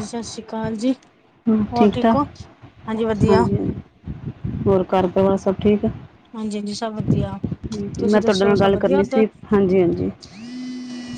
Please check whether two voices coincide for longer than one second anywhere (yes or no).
yes